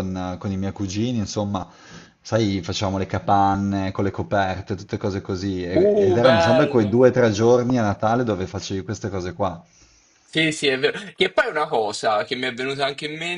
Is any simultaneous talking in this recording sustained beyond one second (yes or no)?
yes